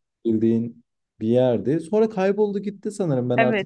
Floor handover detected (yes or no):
yes